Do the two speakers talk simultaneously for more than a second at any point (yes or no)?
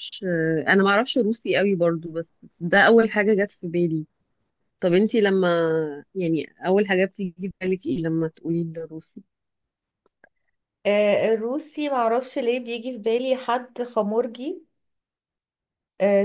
no